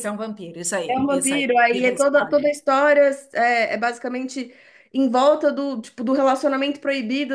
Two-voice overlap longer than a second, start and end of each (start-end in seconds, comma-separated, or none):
0.9-2.5